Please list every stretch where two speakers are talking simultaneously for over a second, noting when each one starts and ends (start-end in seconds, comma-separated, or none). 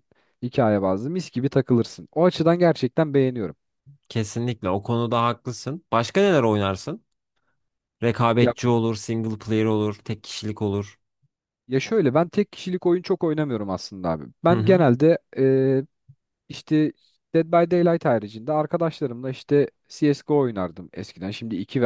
none